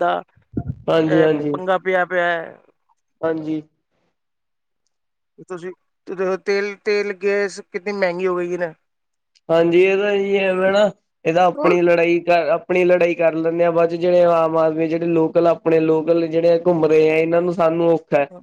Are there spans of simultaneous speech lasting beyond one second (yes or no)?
no